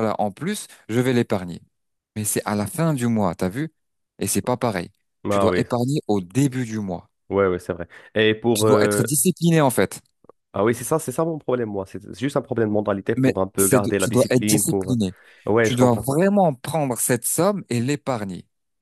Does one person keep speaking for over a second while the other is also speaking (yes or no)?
yes